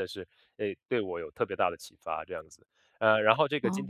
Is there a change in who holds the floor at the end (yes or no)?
no